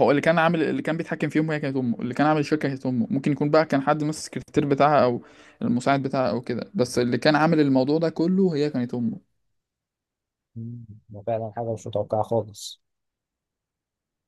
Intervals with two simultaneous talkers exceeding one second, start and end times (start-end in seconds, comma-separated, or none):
none